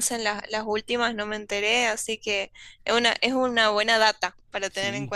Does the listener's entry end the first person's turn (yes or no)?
yes